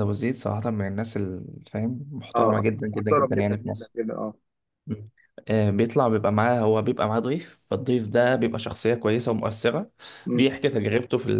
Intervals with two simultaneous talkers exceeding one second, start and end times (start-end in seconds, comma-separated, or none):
2.3-3.9